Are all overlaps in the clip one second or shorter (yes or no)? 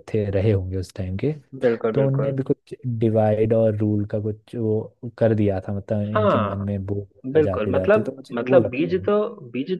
no